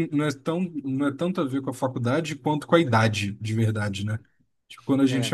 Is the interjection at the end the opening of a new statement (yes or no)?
no